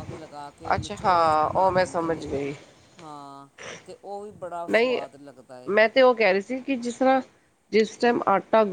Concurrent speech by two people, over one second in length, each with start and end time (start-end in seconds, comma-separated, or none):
0.8-2.3